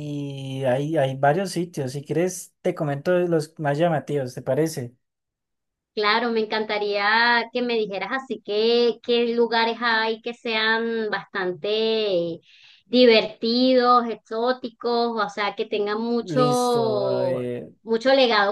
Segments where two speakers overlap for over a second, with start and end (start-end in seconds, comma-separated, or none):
16.2-17.4